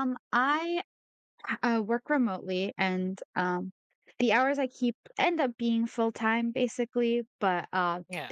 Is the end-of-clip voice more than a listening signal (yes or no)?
no